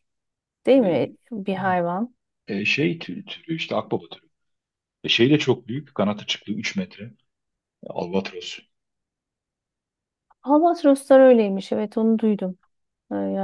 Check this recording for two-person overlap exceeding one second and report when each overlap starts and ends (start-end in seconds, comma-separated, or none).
none